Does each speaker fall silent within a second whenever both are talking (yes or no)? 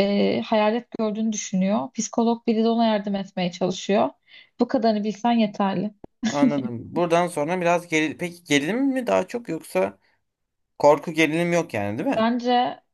yes